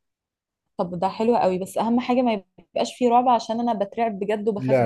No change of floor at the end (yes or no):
no